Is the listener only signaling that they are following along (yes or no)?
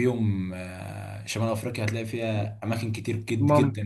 yes